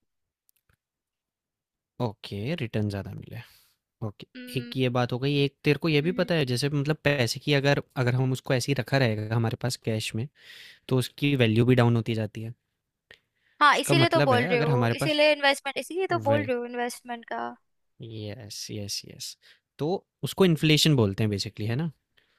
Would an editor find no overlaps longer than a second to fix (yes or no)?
no